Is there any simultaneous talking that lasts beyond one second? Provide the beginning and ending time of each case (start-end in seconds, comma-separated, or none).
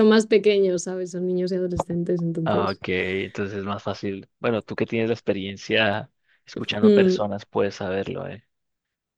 none